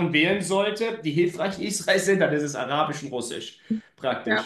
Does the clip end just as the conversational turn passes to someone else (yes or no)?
yes